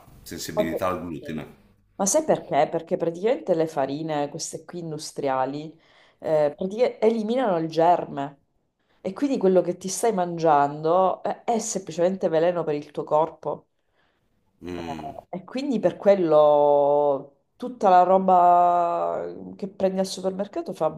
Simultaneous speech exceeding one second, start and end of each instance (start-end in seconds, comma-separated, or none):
none